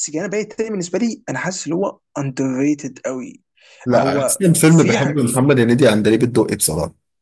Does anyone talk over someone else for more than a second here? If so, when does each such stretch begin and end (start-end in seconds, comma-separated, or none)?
3.9-5.3